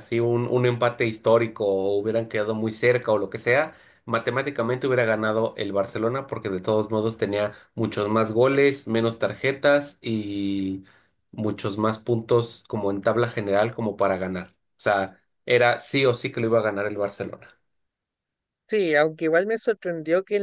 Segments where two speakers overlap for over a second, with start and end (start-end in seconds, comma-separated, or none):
none